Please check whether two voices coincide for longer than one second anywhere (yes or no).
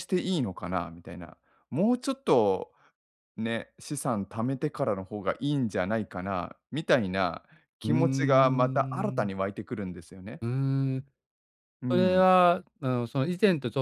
yes